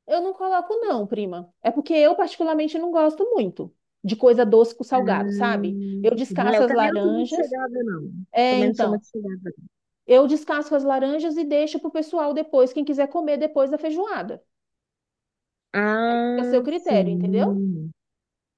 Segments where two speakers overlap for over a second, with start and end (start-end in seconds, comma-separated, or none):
4.9-7.5, 16.1-17.6